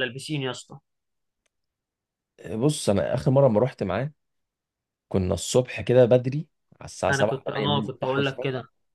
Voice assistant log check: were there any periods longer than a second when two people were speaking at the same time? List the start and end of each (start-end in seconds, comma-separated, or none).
7.1-8.4